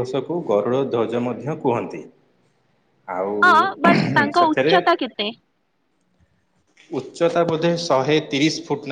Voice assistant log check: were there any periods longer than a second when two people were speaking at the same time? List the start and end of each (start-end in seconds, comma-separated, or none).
none